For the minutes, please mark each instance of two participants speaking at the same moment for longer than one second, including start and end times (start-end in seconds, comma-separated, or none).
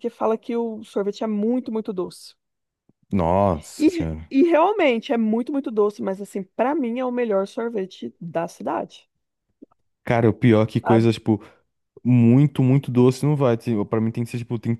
none